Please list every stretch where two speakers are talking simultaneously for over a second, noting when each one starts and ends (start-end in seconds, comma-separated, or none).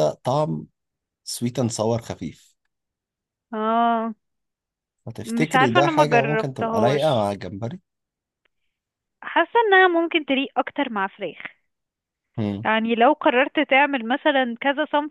5.2-7.3